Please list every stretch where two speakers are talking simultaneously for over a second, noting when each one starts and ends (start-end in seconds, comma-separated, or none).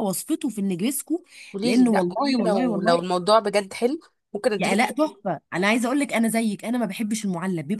1.6-3.0